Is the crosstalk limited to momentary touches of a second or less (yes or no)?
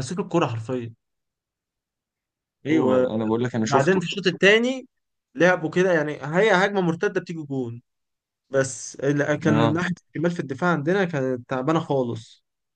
no